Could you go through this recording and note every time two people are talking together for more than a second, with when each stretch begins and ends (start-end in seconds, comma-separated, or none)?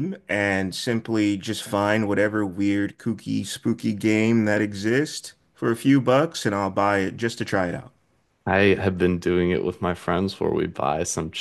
none